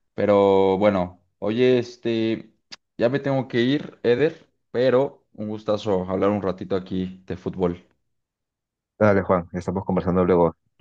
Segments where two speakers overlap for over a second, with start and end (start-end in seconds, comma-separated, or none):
none